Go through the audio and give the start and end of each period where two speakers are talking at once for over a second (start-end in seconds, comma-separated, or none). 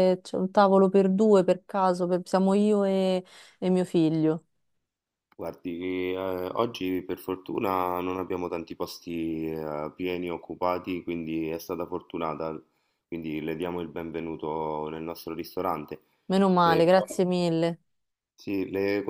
none